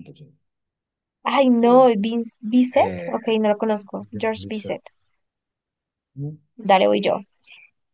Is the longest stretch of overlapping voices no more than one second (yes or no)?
yes